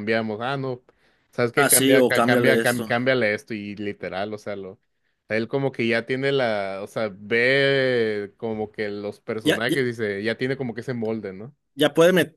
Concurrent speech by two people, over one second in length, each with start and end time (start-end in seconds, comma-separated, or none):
1.5-2.9